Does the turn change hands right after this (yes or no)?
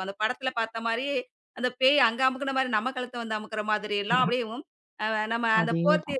no